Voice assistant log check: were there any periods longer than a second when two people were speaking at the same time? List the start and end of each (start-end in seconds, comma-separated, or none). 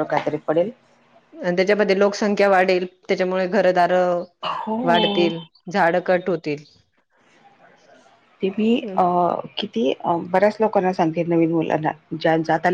none